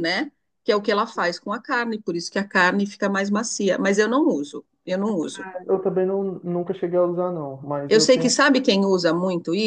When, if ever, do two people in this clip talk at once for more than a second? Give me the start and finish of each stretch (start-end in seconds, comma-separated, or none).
none